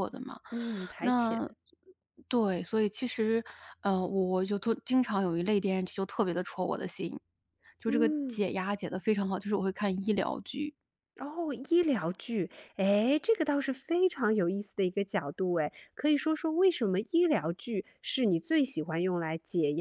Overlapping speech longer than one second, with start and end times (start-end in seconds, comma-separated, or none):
none